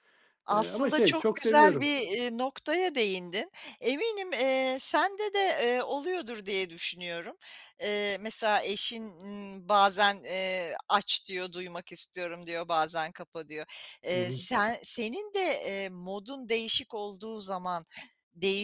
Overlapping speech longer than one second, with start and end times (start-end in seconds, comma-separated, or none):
0.5-1.9